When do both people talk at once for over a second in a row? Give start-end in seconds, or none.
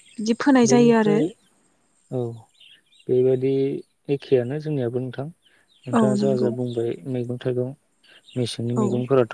none